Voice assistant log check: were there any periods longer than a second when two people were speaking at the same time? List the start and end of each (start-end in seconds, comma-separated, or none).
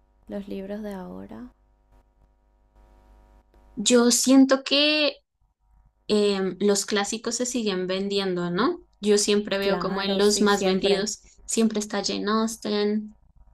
9.6-11.1